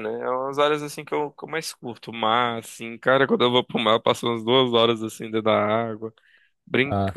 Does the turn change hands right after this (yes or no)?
no